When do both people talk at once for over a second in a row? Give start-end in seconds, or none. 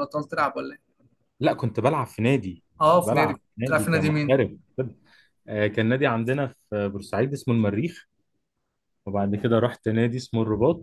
2.8-4.4